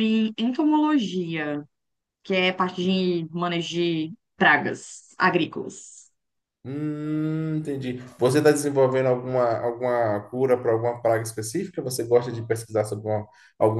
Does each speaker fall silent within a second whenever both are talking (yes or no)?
yes